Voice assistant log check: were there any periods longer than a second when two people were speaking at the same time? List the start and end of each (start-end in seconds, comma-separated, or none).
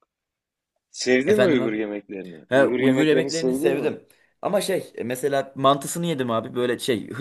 2.5-3.9